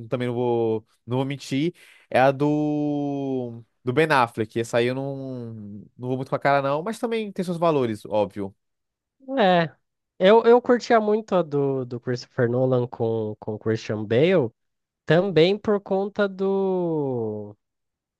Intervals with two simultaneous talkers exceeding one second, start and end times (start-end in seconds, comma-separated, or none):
none